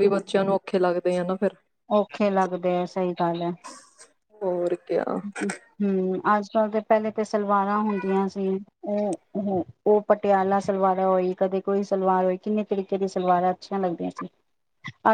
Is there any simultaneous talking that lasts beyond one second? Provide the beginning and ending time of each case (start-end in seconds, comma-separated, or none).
none